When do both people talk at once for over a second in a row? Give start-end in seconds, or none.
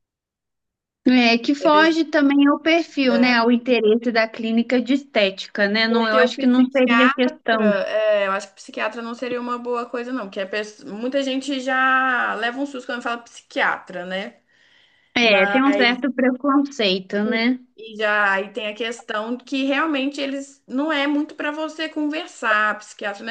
5.9-7.4